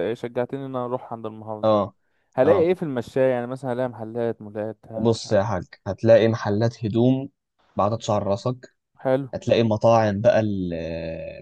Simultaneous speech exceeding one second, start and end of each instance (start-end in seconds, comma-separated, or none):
none